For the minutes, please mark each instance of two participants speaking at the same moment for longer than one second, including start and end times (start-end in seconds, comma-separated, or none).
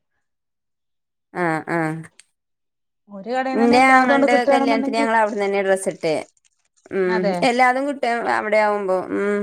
3.6-5.1